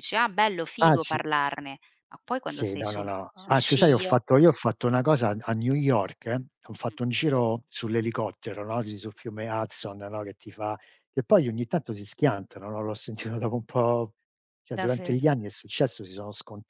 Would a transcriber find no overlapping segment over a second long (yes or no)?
no